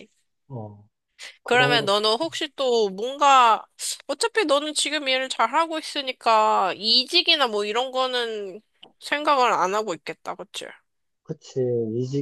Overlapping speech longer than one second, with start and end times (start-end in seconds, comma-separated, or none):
none